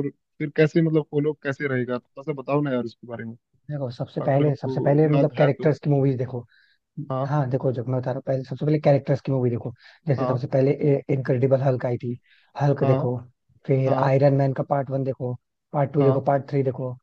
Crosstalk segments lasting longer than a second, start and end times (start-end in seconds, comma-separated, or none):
4.2-5.7